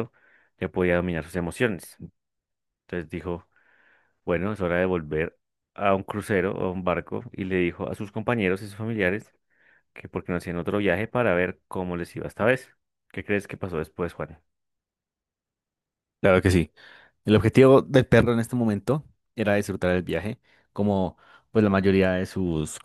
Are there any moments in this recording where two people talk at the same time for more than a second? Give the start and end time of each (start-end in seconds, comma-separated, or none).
none